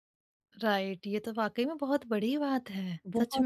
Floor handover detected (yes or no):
yes